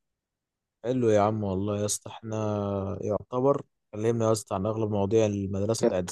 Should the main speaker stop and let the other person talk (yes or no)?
yes